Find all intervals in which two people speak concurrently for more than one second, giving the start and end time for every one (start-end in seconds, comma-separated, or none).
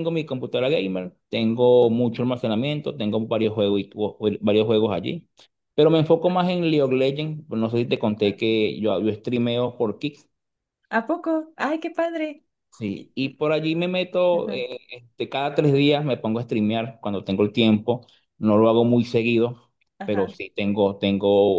none